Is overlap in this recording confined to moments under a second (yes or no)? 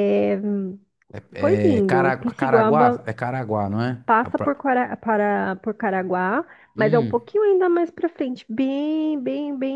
no